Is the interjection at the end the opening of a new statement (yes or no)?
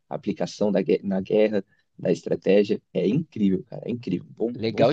yes